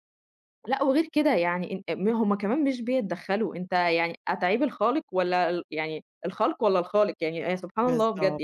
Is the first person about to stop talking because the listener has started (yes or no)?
no